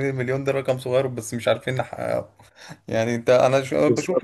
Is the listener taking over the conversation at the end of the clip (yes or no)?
yes